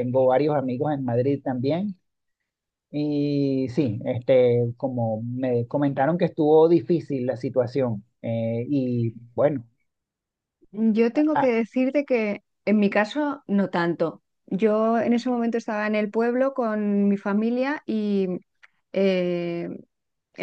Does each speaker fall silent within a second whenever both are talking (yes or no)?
yes